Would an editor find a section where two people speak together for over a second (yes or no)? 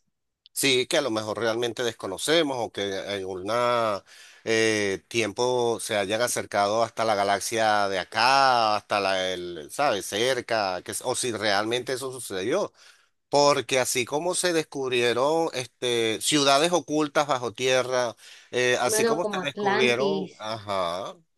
yes